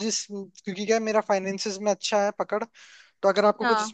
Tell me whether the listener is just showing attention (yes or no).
yes